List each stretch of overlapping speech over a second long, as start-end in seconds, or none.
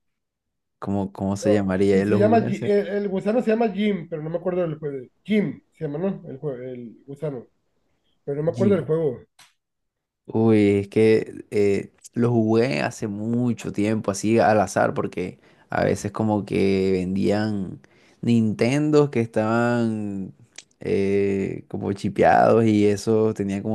1.4-2.8